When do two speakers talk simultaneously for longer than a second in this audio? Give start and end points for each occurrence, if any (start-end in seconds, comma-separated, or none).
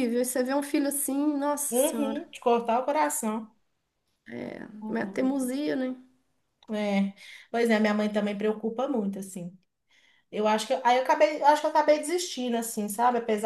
none